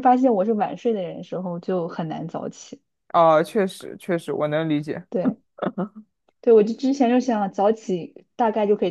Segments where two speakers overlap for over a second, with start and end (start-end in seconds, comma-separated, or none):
none